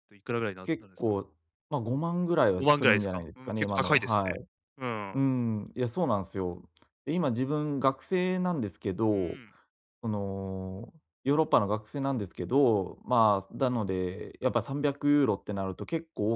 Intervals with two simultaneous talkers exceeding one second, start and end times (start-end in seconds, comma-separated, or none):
2.6-4.3